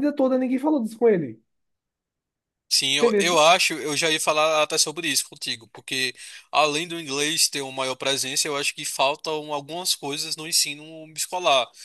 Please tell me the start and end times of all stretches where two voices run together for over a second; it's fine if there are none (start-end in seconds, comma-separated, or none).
none